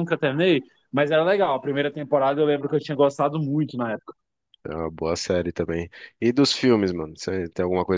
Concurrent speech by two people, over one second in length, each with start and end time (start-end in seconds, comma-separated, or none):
none